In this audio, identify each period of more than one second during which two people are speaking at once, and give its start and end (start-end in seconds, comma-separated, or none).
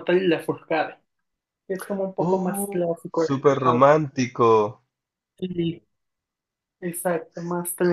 2.2-3.9